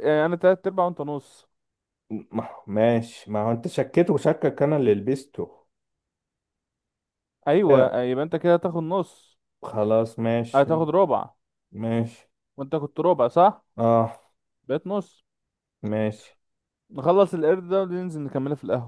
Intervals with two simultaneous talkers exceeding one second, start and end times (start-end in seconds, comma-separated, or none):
none